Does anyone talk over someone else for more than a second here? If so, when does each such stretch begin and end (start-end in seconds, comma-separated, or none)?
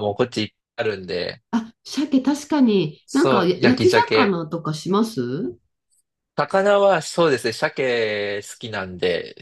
3.0-4.4